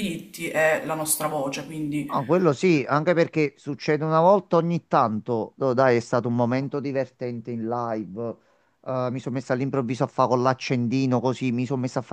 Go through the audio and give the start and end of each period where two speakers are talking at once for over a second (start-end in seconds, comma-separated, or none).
none